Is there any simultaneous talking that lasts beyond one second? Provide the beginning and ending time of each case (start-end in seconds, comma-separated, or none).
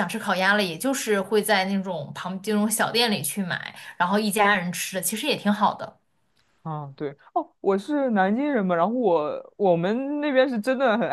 none